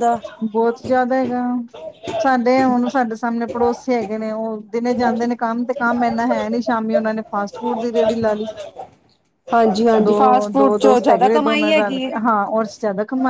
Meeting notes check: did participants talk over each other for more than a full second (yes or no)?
yes